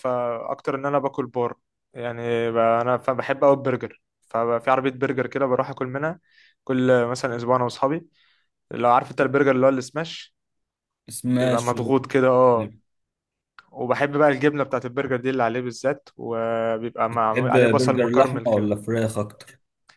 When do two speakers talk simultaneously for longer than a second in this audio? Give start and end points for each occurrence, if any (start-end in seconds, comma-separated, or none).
17.0-18.7